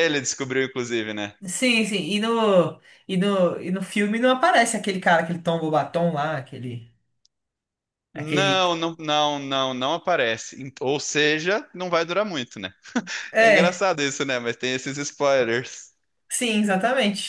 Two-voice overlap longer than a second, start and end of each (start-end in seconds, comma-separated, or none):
none